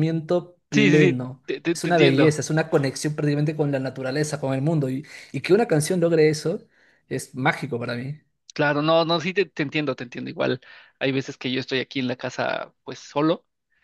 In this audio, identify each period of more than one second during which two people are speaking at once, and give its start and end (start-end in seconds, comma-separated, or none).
0.7-2.4